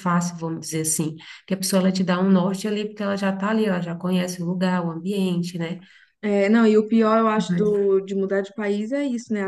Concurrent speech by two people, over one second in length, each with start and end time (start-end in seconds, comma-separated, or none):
none